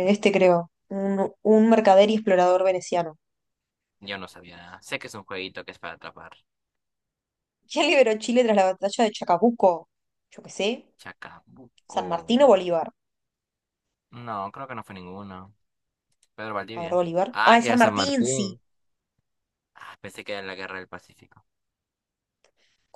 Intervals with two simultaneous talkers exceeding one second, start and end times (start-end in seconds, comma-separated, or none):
16.8-18.5